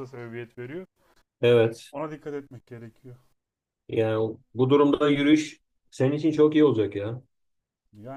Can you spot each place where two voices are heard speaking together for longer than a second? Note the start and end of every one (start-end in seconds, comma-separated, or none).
none